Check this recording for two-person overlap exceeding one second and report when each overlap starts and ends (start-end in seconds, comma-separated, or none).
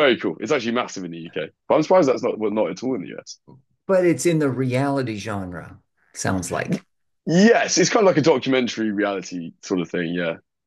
none